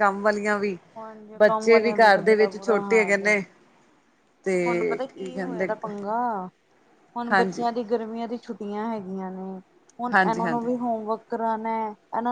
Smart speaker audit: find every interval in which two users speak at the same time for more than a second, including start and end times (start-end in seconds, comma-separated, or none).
1.4-3.4